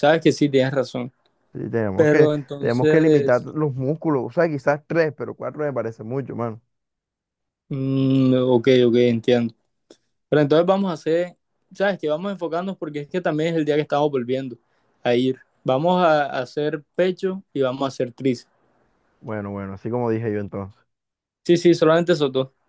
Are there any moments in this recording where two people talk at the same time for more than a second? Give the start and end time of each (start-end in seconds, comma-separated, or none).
1.9-3.5